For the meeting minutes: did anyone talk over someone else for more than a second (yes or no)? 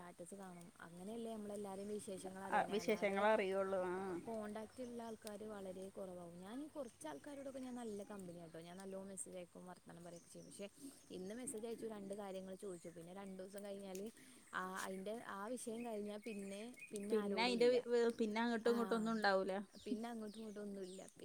no